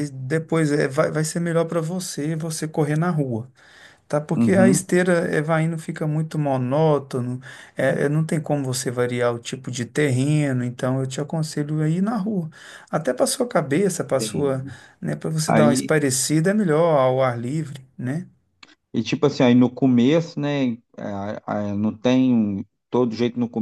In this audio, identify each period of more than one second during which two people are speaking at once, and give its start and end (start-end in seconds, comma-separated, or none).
none